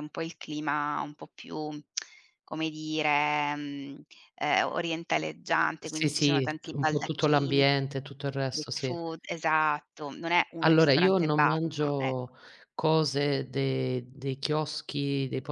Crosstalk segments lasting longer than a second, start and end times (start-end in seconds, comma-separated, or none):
5.8-7.6, 10.6-12.3